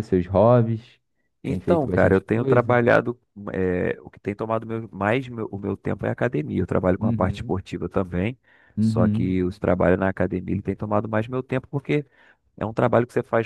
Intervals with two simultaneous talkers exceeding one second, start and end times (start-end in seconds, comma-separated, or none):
1.4-2.8